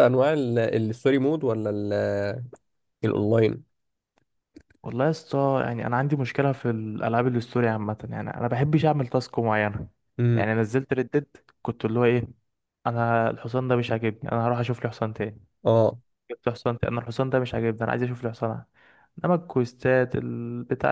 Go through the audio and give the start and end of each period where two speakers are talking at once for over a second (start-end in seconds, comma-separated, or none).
none